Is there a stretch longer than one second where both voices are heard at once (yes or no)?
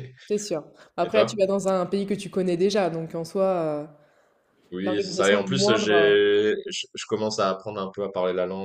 yes